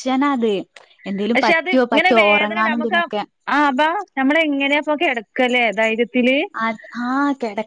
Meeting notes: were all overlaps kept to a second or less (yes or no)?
no